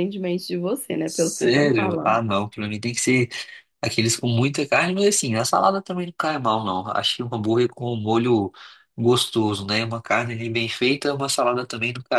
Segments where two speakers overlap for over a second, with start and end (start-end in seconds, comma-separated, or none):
1.0-2.2